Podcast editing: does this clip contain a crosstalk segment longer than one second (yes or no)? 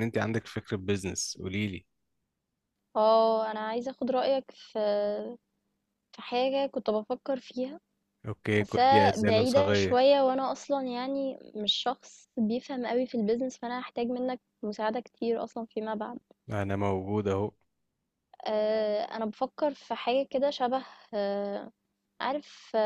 yes